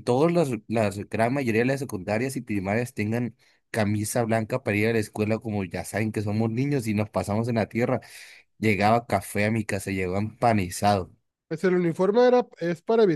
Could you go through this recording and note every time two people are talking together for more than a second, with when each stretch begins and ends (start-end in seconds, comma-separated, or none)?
none